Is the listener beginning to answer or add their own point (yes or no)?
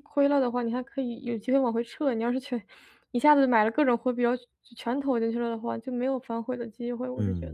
yes